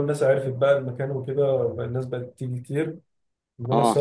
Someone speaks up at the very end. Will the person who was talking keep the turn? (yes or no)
yes